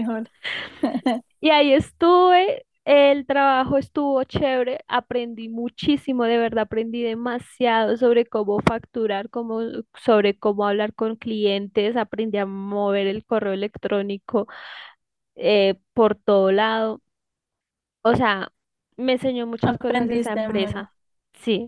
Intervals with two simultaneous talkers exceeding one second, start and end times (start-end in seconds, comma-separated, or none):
19.6-20.8